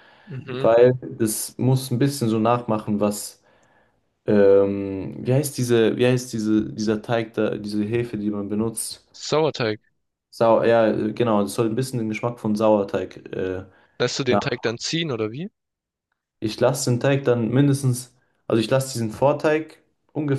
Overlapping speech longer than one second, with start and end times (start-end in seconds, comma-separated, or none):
none